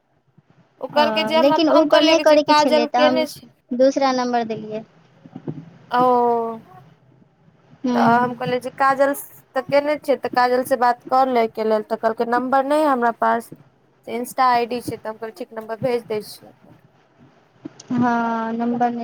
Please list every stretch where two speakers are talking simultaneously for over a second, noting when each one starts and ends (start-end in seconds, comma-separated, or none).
0.9-3.2